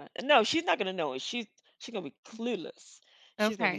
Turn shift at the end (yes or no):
yes